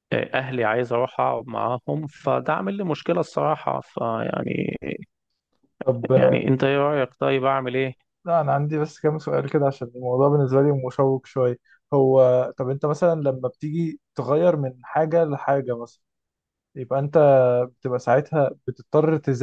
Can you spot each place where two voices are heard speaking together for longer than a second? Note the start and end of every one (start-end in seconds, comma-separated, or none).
none